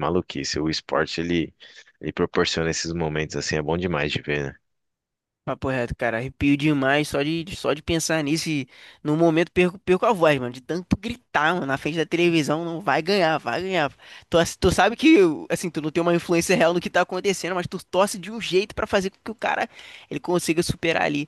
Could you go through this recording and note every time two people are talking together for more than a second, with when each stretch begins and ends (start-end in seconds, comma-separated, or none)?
none